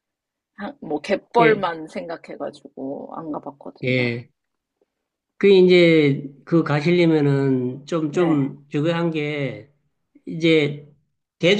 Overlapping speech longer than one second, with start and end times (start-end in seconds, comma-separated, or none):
none